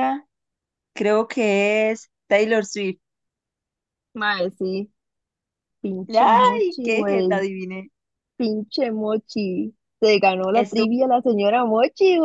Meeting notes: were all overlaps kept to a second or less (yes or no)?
no